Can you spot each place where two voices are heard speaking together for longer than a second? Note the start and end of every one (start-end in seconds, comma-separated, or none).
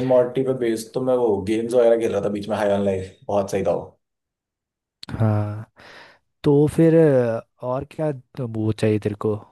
none